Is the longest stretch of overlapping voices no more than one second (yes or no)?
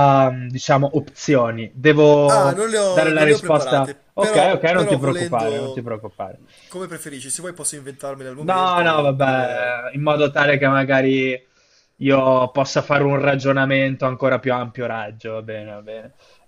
no